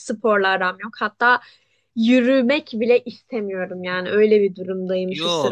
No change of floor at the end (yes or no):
no